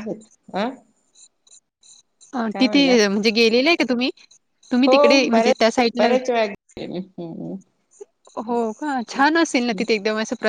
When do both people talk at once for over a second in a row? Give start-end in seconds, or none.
4.9-6.1